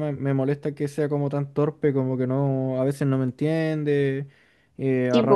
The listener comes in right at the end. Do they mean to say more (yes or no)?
no